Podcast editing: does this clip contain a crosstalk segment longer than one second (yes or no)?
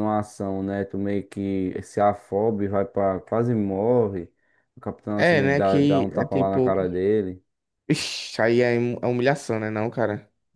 yes